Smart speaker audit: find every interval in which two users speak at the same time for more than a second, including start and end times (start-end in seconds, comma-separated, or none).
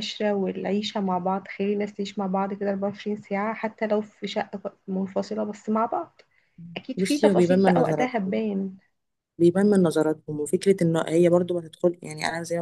7.0-8.3